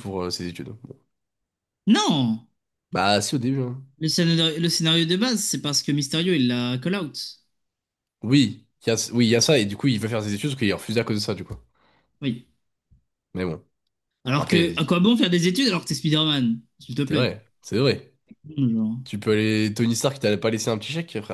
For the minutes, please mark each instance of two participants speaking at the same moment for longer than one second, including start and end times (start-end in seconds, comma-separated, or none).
none